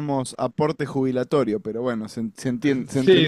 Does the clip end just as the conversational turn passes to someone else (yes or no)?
yes